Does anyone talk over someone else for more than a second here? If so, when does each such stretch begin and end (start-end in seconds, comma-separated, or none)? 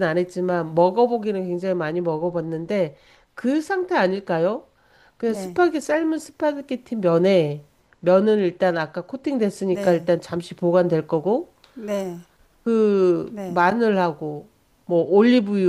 none